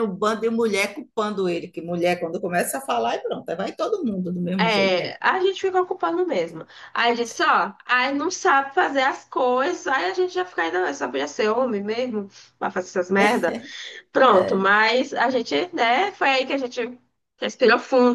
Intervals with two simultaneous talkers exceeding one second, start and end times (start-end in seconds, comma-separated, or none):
none